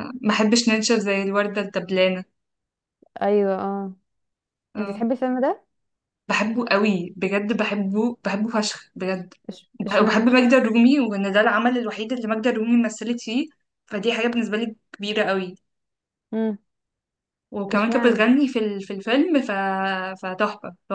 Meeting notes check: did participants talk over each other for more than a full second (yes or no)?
no